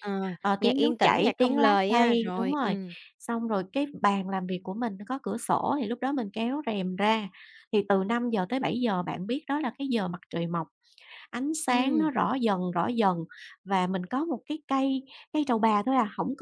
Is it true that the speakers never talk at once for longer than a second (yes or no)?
no